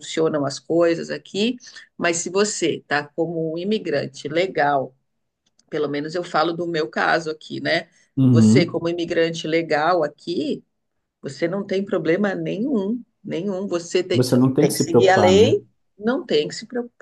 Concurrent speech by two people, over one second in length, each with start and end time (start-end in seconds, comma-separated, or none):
14.1-15.6